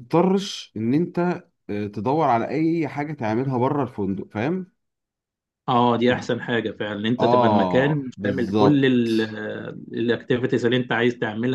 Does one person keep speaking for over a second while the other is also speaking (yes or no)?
yes